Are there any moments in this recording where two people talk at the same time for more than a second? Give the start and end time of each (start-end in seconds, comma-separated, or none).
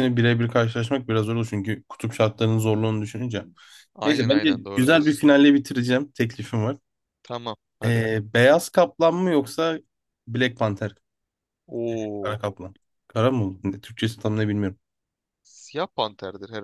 4.0-5.2